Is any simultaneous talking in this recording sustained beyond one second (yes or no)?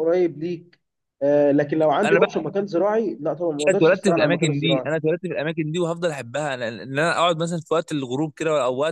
yes